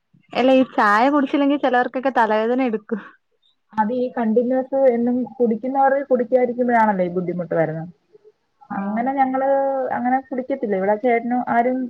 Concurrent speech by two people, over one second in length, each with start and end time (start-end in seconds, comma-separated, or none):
none